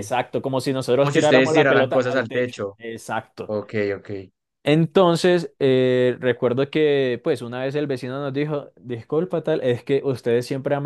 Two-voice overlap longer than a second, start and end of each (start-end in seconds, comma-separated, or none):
1.0-2.8